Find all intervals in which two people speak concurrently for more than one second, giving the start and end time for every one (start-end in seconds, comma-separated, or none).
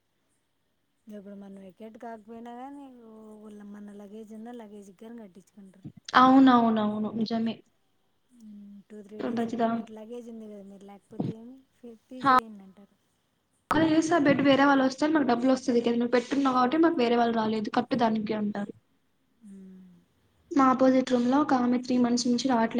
none